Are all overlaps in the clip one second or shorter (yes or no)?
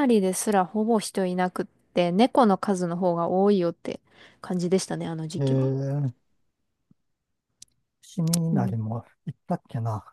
yes